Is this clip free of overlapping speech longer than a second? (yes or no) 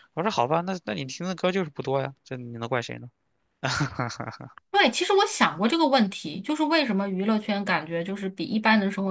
yes